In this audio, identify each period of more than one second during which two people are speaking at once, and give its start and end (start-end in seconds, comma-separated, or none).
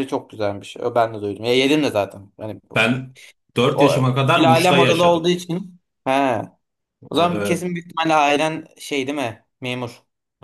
3.7-5.2